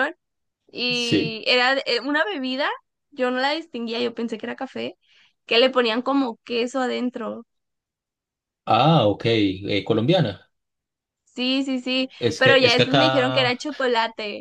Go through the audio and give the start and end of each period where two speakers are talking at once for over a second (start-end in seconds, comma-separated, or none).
12.2-13.6